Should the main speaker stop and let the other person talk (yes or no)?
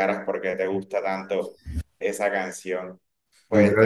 no